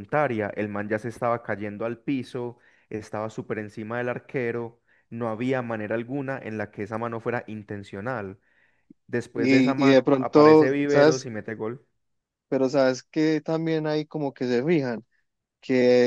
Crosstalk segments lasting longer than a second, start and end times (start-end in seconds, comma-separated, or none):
9.3-11.2